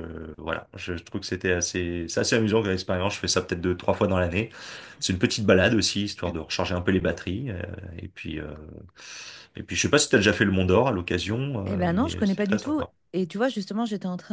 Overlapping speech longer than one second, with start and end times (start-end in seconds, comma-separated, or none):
11.7-12.9